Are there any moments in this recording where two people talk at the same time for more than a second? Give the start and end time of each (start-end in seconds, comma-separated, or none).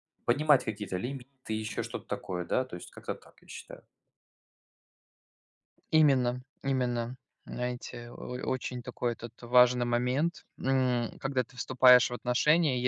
none